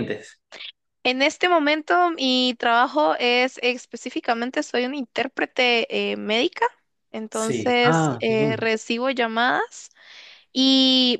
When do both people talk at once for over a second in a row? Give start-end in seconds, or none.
7.3-8.7